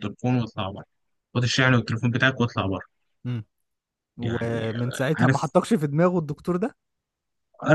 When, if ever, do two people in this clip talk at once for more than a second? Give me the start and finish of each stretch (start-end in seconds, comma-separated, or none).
4.2-5.5